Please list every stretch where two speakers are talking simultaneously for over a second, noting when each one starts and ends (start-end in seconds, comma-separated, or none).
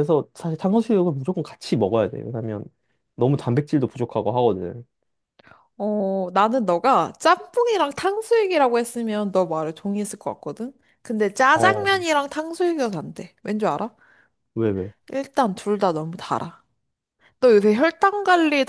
none